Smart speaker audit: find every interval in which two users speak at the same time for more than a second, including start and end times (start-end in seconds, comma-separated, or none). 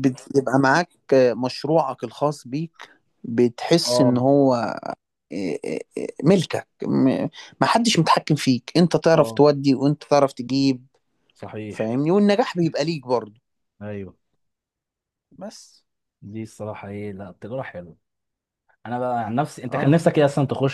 none